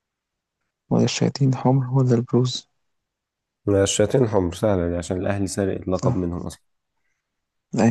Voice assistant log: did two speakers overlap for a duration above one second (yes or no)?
no